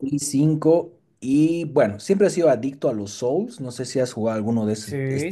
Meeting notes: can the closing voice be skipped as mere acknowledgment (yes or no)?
no